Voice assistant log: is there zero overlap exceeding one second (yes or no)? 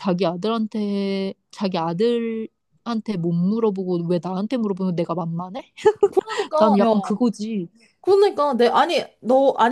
yes